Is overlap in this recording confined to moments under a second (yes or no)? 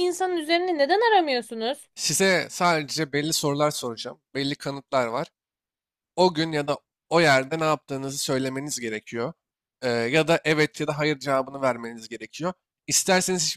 yes